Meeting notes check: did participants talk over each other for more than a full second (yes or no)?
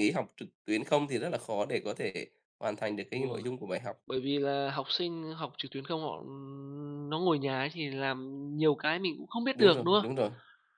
no